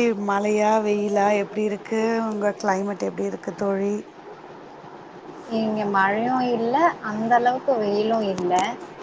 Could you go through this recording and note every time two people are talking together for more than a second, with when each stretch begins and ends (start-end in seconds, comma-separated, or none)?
none